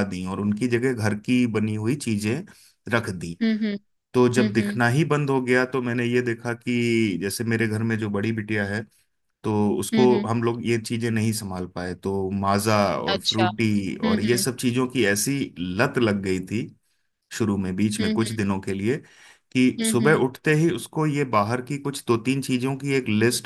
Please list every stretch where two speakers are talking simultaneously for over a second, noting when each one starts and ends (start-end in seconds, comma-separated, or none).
13.1-14.4